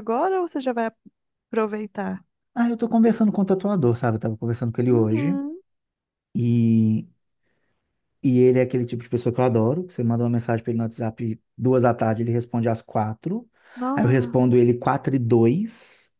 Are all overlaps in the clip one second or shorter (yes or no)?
yes